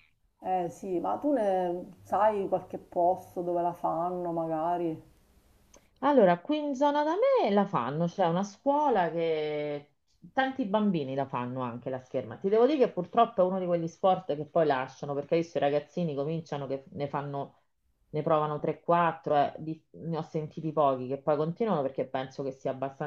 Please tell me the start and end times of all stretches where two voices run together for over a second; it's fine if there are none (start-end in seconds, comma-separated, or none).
none